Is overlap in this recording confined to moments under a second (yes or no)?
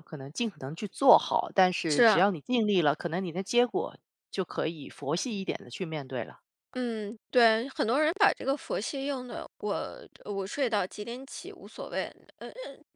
yes